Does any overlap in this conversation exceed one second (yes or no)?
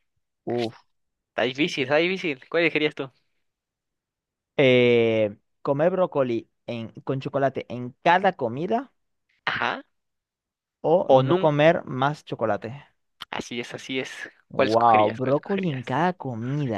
yes